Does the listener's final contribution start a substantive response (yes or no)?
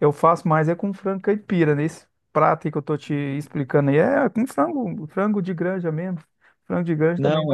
no